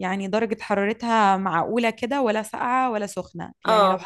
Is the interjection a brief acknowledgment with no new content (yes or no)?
yes